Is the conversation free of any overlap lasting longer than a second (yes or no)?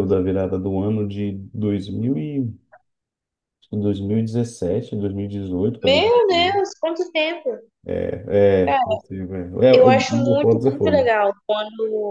no